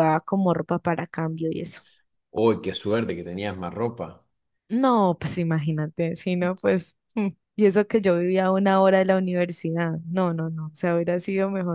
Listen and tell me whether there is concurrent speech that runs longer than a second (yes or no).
no